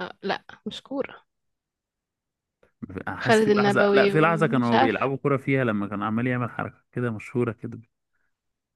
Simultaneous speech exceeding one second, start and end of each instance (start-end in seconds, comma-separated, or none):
3.2-5.1